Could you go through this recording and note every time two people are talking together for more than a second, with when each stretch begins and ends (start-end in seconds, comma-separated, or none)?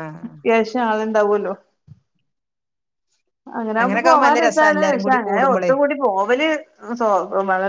3.8-5.7